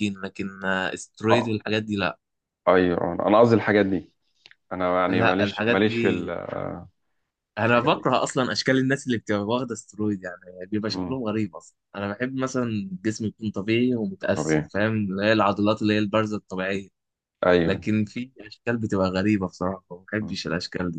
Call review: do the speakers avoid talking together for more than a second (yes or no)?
no